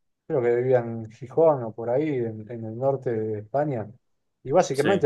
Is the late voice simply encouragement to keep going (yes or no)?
yes